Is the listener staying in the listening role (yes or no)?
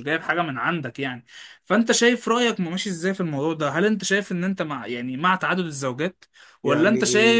yes